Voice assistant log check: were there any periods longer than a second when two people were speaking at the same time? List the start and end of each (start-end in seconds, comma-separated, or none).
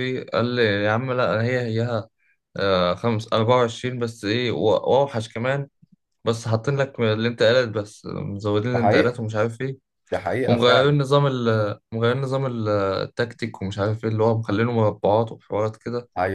none